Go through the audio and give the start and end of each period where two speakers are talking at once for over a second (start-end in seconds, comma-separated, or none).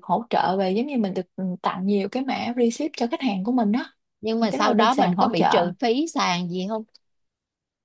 4.4-5.6